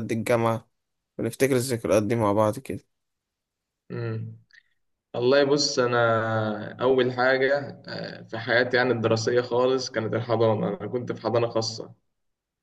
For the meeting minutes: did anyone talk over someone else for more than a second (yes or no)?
no